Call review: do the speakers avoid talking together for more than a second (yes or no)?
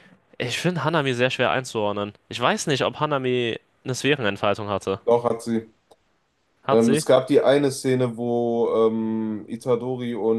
yes